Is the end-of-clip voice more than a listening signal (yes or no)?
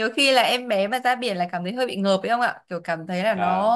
no